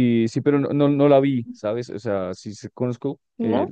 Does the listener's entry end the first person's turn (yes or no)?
no